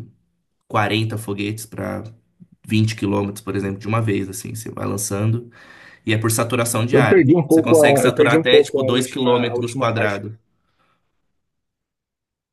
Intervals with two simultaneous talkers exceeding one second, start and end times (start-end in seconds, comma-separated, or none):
6.9-10.2